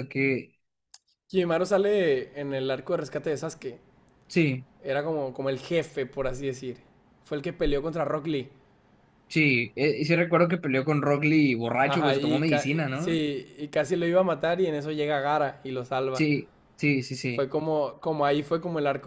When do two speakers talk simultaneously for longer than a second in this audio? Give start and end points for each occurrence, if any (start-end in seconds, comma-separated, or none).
11.8-13.2